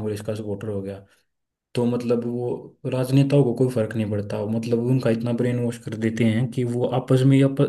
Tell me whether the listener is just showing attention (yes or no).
yes